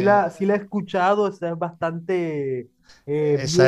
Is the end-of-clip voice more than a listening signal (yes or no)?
yes